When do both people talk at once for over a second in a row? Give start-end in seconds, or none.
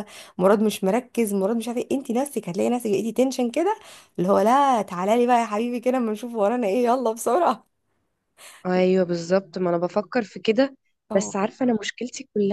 none